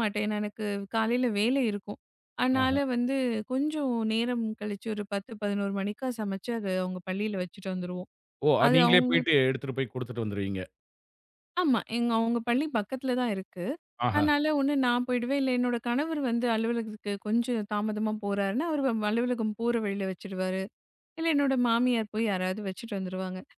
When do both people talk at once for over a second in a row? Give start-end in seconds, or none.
none